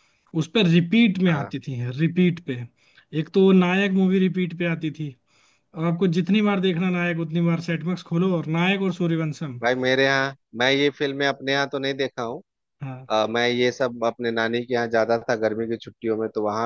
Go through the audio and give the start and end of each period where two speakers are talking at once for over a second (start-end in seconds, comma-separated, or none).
none